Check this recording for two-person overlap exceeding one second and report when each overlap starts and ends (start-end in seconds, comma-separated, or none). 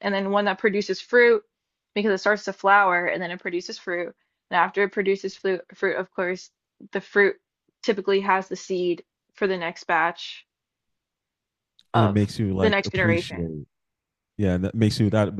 11.9-13.5